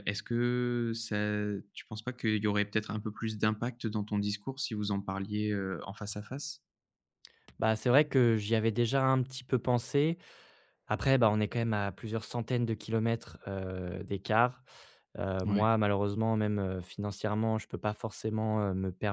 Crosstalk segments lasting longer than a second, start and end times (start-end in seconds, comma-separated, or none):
none